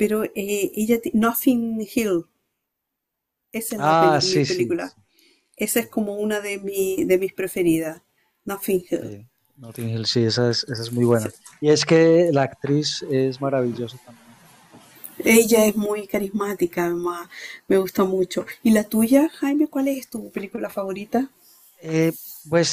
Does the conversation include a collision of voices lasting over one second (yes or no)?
yes